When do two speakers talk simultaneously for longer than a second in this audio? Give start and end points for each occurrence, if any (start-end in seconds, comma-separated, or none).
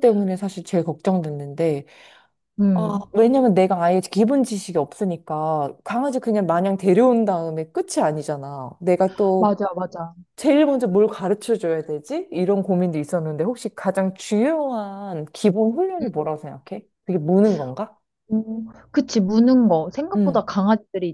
none